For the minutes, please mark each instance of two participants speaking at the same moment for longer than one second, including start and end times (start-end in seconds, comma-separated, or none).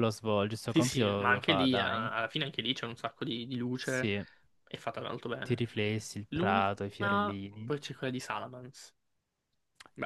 0.6-2.1, 6.3-7.7